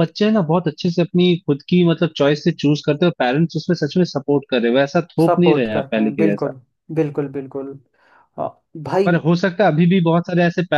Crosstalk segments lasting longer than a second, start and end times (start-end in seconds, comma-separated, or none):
5.3-6.5